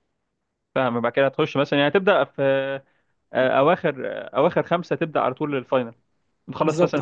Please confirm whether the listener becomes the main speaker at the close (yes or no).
yes